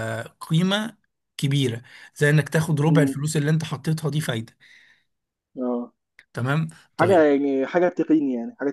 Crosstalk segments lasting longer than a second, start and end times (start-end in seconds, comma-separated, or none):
none